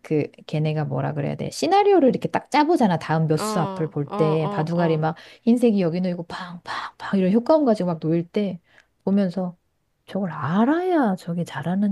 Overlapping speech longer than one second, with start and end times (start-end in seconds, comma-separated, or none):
3.4-5.1